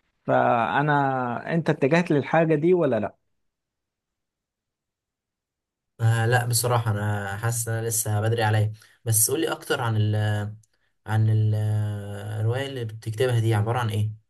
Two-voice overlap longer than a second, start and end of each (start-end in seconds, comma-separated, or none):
none